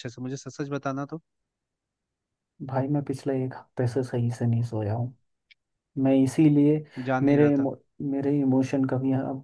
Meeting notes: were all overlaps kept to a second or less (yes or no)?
yes